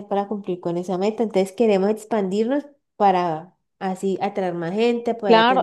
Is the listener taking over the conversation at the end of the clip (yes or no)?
yes